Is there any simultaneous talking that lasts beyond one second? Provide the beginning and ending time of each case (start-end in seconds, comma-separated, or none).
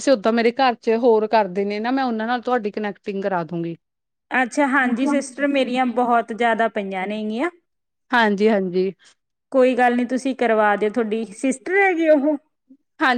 none